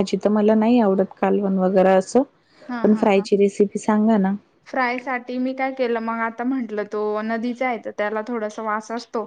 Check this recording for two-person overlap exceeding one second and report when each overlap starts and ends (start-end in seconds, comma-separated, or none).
none